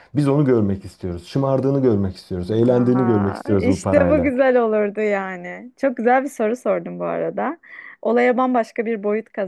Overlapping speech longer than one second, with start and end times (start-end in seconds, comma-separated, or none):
2.6-4.3